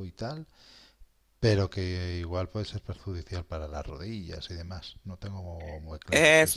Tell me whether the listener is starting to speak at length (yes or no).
yes